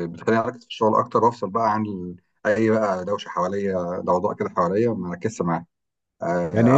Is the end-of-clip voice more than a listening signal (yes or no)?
yes